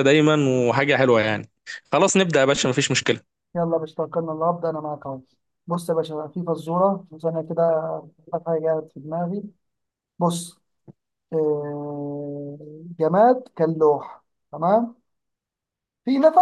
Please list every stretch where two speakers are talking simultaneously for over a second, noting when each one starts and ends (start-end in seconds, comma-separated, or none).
none